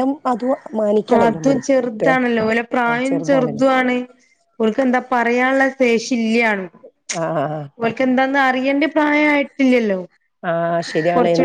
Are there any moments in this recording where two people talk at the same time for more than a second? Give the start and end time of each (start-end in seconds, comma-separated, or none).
none